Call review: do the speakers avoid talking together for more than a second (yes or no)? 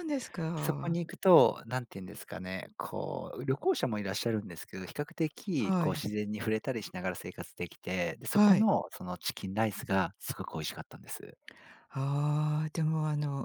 yes